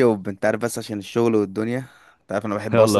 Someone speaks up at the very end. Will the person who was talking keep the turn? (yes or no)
no